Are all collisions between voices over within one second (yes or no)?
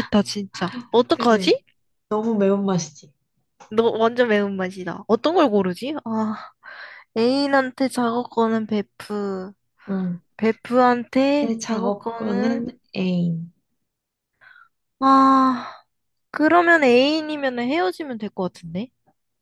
no